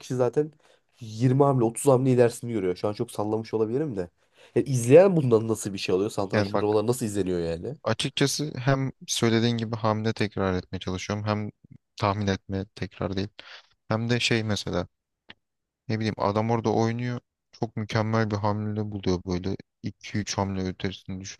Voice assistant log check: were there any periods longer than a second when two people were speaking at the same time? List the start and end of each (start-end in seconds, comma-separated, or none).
none